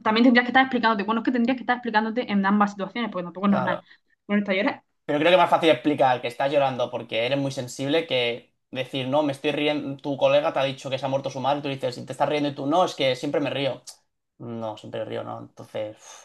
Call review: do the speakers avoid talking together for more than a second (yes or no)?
yes